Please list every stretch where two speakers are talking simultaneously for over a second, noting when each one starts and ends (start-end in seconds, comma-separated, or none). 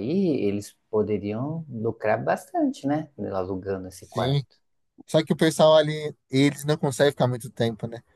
none